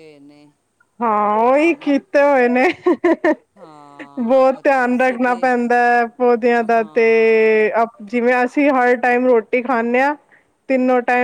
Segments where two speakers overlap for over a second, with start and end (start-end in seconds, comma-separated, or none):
4.2-5.5